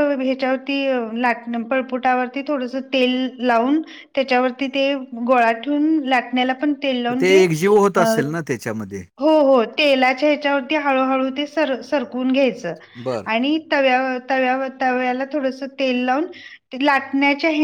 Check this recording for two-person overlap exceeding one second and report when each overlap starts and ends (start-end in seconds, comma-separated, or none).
none